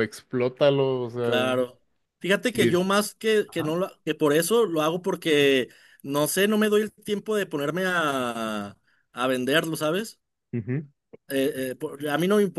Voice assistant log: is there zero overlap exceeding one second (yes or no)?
yes